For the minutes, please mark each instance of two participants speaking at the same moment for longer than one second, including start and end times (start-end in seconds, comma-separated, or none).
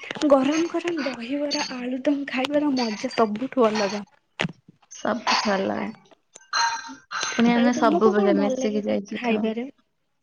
7.6-9.4